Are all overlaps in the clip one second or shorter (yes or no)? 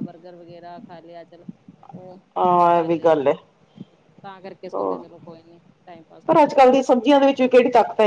yes